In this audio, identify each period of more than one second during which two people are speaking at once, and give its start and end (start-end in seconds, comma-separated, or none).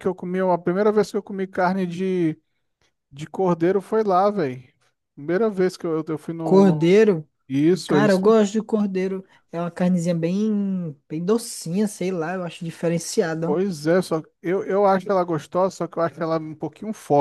none